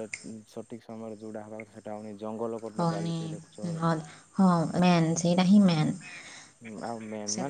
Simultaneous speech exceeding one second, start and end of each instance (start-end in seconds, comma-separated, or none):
none